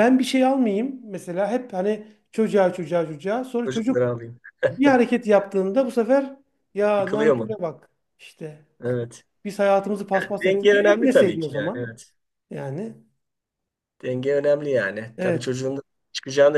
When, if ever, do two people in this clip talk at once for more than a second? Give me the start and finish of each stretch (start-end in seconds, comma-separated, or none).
10.1-11.9